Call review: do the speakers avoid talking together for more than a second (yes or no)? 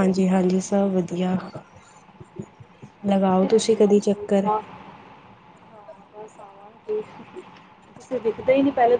no